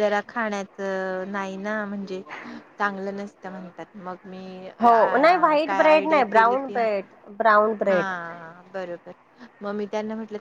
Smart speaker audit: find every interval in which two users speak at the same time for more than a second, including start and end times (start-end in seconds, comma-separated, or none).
4.8-6.8